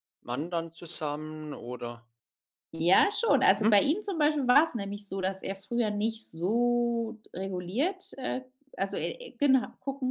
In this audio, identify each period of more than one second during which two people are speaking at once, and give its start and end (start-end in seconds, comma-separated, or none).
none